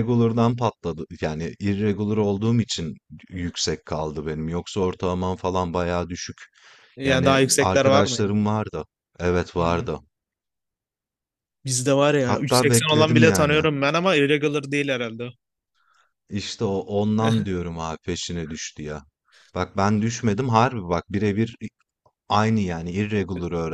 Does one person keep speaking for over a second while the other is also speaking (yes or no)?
yes